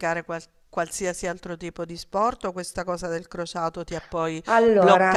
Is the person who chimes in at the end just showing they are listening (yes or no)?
yes